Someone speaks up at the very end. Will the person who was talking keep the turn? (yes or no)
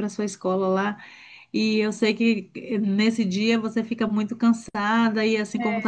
yes